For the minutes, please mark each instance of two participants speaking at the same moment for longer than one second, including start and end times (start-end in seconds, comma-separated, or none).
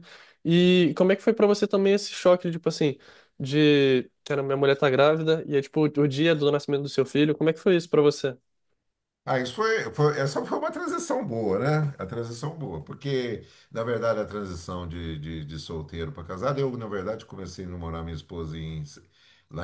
none